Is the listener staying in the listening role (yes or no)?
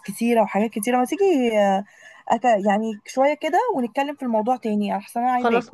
no